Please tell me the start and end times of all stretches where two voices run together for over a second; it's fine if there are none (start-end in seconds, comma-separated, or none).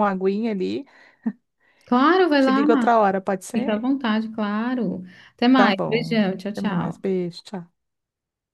5.5-7.1